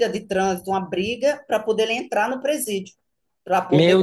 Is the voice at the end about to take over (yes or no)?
no